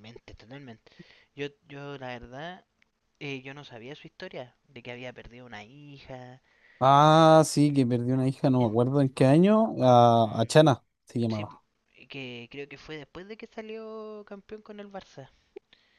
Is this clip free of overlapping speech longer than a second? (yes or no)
yes